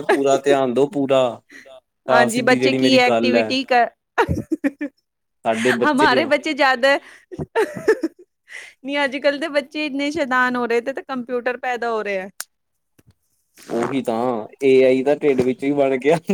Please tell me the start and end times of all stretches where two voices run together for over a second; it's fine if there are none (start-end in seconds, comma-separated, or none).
2.1-3.6